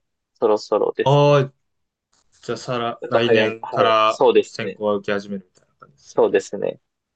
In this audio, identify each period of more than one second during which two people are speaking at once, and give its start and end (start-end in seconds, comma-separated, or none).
3.0-4.8